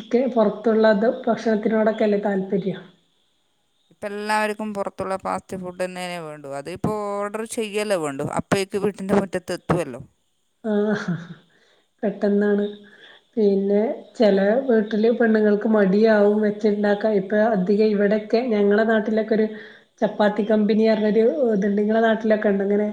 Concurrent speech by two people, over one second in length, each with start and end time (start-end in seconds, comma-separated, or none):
none